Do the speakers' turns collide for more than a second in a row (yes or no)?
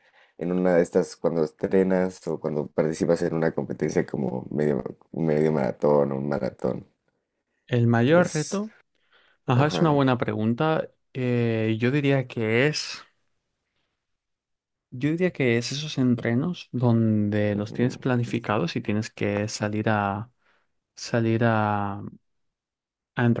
no